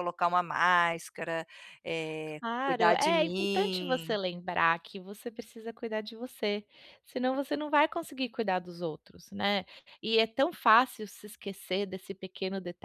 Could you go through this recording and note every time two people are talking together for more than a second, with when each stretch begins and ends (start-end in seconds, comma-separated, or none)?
2.4-4.2